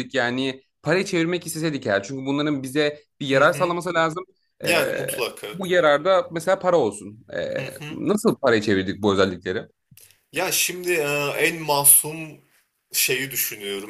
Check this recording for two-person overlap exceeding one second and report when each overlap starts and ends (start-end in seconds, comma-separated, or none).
none